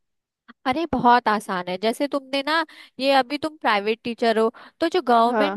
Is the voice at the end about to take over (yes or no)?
no